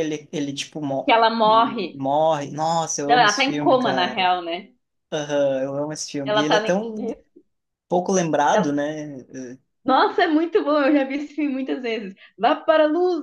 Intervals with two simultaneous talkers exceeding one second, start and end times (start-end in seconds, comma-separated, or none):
3.1-4.3